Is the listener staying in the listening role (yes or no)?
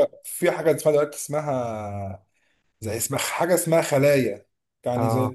yes